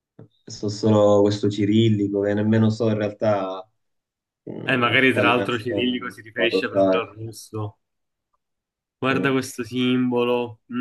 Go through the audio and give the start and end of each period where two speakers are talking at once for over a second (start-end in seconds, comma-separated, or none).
4.6-7.2